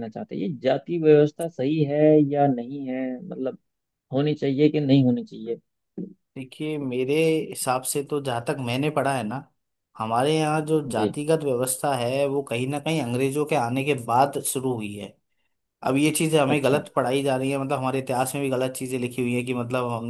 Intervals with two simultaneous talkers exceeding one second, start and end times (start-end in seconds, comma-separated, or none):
none